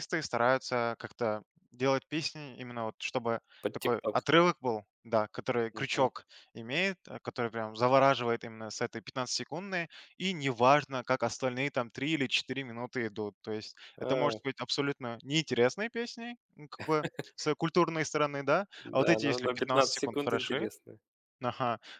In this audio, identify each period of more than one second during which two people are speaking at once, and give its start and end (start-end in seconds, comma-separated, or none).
19.0-20.7